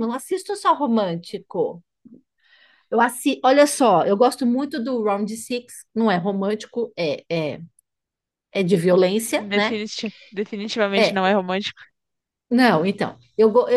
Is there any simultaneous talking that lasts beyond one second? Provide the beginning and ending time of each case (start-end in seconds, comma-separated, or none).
none